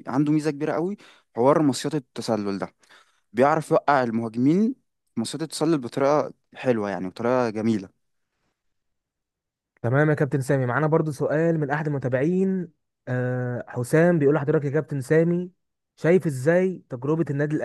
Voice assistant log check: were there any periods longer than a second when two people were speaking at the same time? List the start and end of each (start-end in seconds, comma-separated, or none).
none